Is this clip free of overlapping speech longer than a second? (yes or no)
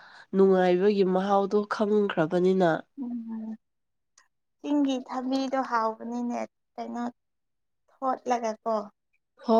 yes